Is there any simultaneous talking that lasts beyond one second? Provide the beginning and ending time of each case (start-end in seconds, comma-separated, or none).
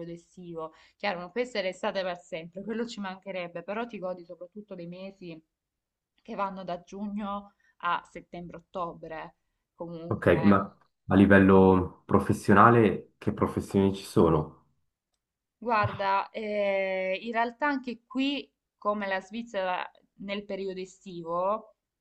none